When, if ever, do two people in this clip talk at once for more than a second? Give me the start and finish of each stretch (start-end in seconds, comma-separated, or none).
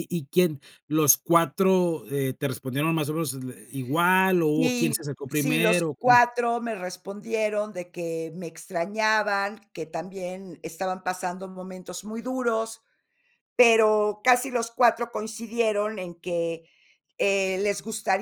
4.6-6.2